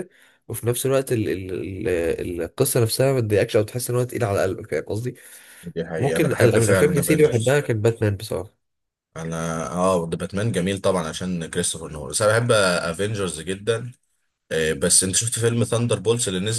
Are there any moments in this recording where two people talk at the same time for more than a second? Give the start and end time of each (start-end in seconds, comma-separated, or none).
6.0-7.5